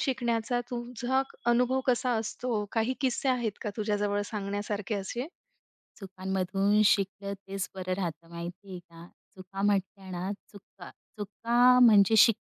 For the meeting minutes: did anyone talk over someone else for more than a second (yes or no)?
no